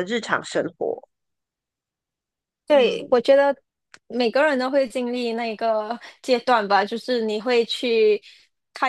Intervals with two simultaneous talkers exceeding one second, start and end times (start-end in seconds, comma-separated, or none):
none